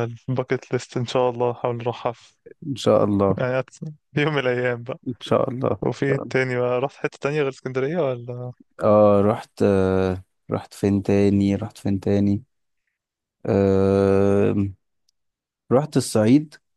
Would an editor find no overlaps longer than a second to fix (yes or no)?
yes